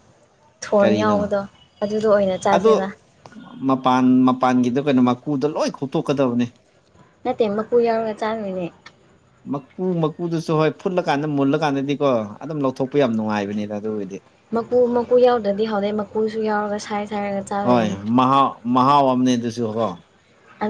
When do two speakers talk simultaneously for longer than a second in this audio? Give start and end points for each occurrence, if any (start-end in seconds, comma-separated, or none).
none